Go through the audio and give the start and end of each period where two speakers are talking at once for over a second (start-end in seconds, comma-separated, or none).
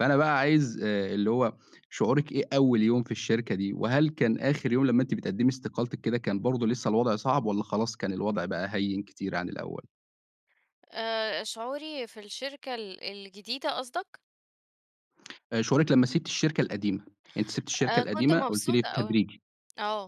17.9-19.2